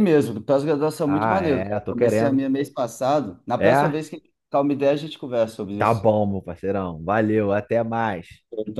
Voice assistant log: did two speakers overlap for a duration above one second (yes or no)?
yes